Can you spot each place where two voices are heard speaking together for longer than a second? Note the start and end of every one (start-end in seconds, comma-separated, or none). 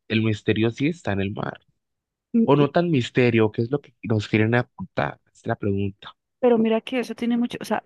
none